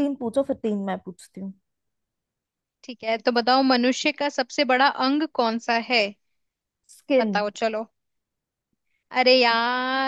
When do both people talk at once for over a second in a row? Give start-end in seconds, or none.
none